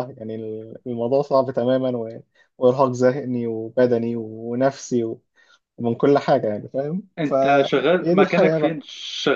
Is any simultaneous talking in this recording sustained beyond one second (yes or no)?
yes